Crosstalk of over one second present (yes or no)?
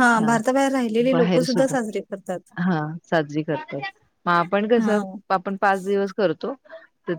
no